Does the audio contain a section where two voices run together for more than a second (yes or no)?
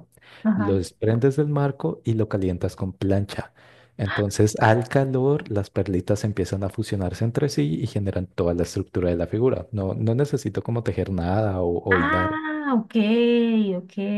no